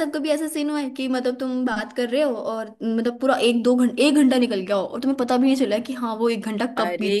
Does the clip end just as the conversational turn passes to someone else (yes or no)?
yes